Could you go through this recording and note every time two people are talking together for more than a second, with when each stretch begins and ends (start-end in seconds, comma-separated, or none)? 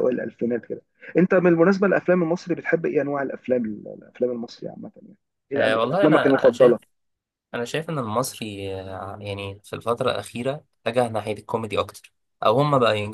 5.5-6.8